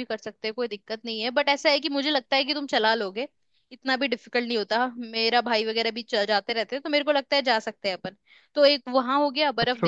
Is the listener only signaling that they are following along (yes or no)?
no